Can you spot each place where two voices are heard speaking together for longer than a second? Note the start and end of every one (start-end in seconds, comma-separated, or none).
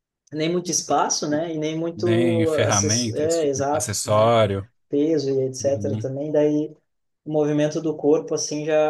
1.9-4.4